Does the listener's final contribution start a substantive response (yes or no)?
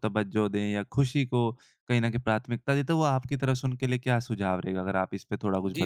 yes